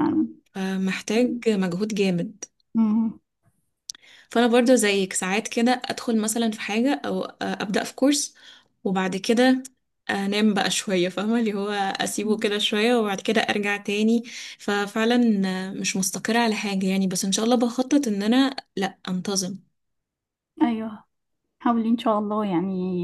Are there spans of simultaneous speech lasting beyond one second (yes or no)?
no